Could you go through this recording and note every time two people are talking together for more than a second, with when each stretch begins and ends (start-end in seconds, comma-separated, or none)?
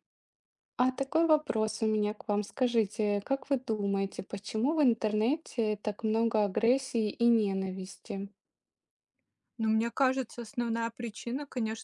none